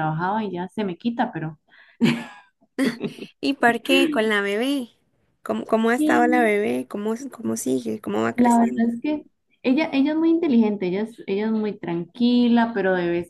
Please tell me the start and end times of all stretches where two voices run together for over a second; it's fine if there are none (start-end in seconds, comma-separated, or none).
none